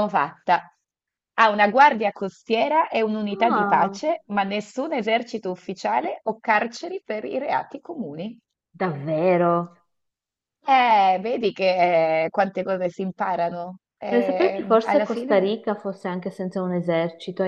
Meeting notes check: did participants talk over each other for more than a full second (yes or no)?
yes